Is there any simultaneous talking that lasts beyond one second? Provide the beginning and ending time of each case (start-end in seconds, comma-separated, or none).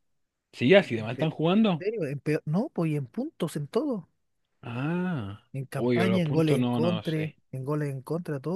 5.5-7.4